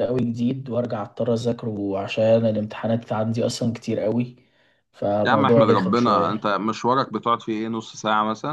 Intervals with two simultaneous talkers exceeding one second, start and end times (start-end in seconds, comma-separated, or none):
5.2-6.5